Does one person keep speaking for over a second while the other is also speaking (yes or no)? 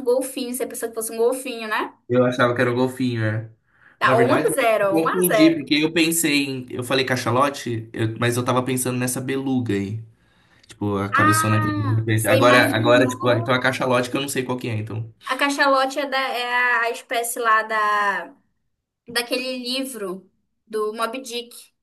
yes